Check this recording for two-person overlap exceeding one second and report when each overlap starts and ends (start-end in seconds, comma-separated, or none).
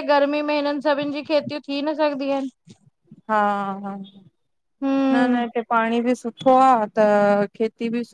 none